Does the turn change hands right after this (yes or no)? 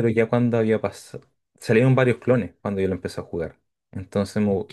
no